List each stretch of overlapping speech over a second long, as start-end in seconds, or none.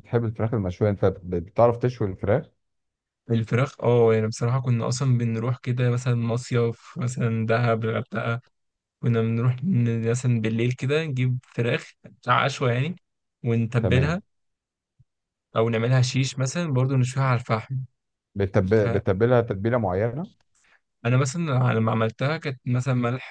none